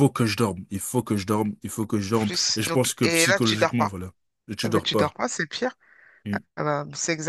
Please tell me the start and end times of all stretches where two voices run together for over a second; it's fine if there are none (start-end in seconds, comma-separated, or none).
2.1-3.9